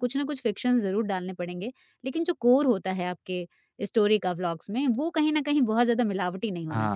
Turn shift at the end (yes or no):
yes